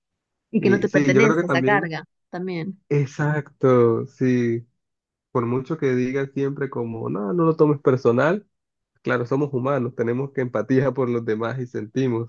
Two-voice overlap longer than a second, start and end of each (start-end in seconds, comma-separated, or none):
0.6-1.9